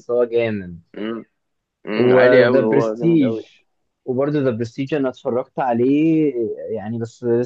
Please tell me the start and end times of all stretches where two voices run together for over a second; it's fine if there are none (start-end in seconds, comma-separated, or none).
1.9-3.4